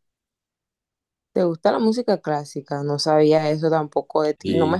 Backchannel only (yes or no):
yes